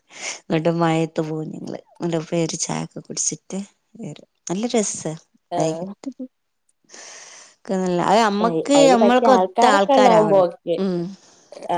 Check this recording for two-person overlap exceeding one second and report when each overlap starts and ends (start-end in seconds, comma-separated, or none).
8.8-10.8